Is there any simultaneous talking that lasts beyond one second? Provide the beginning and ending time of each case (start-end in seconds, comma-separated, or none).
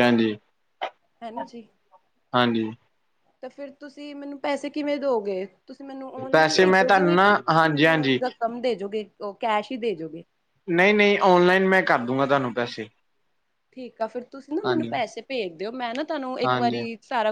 6.3-8.2